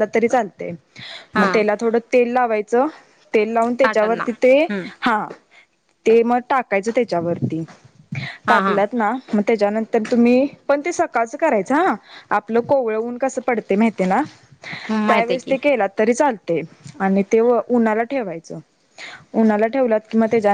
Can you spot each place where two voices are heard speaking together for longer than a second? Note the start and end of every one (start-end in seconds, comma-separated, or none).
none